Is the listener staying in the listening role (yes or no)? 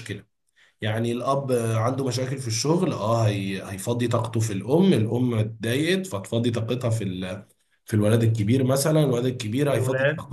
yes